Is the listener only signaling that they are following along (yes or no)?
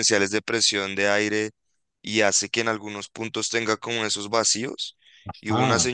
yes